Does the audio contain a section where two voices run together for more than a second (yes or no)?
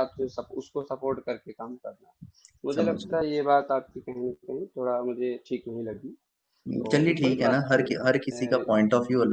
yes